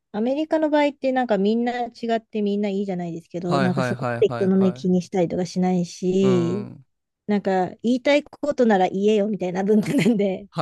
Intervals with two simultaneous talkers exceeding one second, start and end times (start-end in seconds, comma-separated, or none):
3.4-4.9